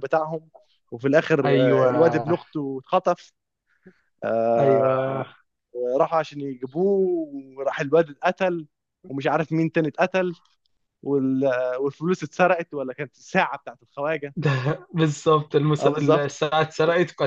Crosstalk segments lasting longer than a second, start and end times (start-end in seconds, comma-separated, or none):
none